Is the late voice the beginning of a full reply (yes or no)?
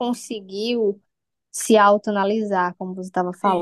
no